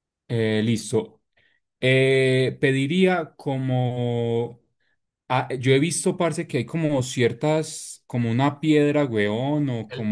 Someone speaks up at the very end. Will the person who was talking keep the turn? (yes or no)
yes